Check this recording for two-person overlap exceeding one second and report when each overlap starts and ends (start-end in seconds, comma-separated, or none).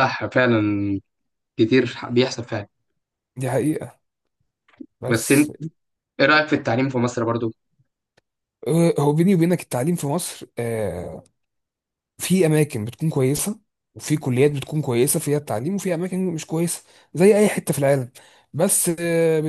none